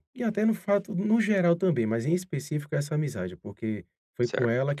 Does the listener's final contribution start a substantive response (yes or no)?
no